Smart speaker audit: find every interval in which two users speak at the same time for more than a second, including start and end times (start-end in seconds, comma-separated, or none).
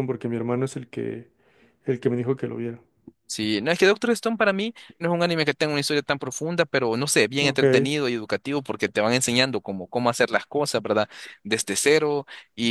none